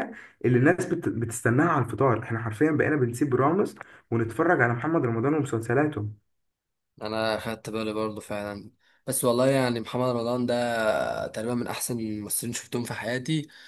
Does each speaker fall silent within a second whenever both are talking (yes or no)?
yes